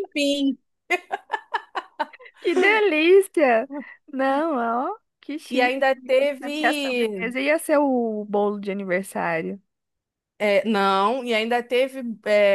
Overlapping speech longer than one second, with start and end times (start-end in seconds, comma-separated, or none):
5.5-7.3